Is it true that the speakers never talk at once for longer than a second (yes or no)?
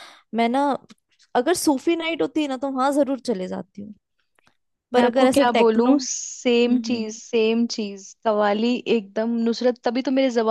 no